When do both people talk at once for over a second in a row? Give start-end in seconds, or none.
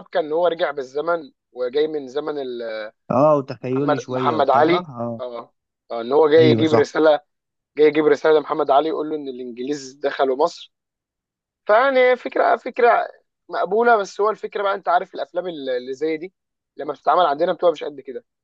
3.7-5.2